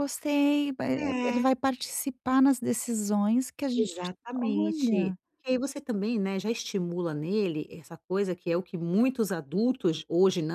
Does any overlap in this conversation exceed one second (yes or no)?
yes